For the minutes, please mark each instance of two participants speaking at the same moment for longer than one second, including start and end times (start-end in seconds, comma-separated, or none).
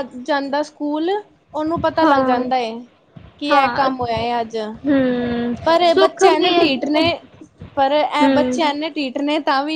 none